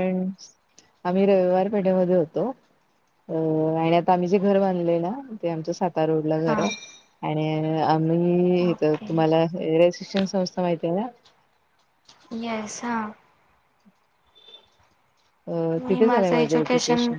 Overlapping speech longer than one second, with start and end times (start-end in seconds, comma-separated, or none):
none